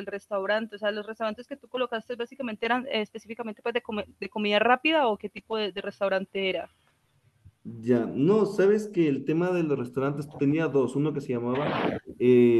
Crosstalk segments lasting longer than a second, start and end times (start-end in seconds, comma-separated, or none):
none